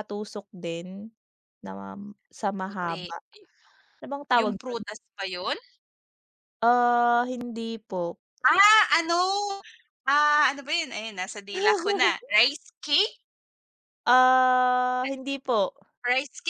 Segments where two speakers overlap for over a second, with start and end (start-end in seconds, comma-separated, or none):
none